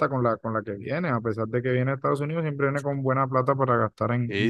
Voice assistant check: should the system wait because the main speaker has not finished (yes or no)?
no